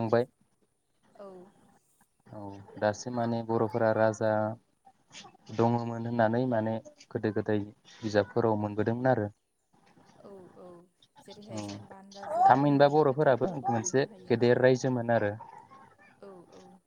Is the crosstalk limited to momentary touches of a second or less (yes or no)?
no